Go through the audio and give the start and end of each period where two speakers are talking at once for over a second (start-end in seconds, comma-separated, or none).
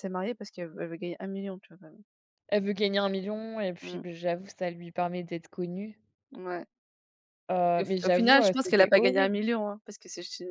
7.8-9.4